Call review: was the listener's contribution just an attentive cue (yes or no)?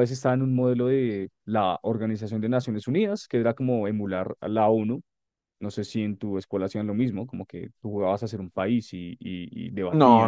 no